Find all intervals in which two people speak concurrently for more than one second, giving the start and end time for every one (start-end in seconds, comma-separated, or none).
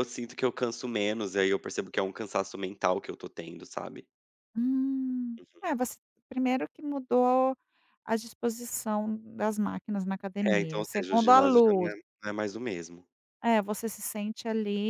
10.4-11.9